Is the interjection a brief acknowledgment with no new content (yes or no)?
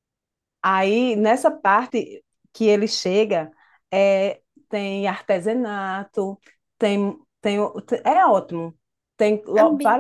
yes